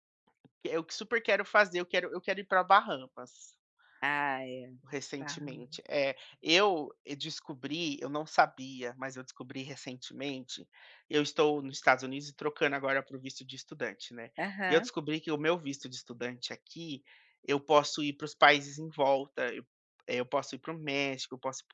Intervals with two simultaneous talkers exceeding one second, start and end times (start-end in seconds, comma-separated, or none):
none